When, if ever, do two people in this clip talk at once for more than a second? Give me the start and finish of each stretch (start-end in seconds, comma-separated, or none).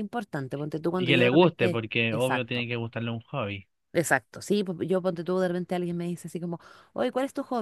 1.0-2.7